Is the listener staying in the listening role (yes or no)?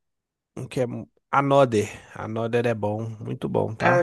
no